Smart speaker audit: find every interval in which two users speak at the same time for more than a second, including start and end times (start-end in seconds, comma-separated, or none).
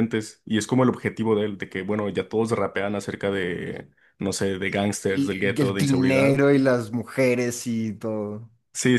5.0-6.4